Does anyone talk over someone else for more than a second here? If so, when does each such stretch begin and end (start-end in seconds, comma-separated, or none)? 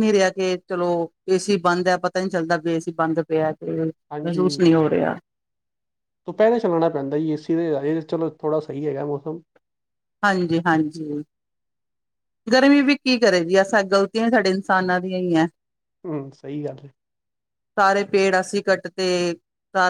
none